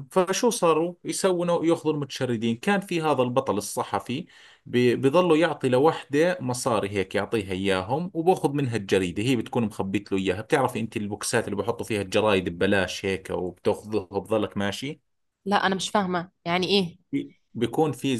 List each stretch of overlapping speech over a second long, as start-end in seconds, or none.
none